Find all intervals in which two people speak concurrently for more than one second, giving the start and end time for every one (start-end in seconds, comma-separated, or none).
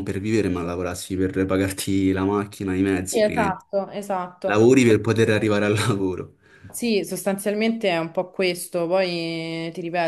none